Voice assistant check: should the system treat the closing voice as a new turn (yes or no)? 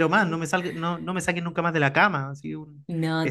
yes